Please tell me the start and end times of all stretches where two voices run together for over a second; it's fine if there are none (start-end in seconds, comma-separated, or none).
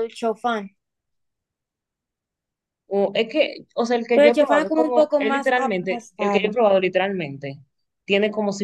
4.1-6.5